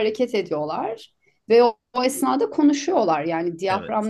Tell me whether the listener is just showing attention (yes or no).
yes